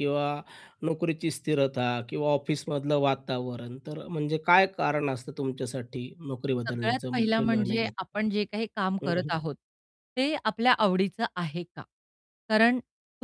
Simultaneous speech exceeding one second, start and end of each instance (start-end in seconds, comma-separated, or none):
6.7-8.1